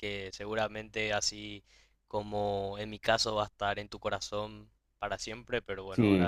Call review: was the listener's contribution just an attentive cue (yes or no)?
no